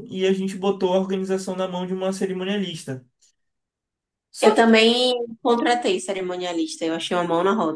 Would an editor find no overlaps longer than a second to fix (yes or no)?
yes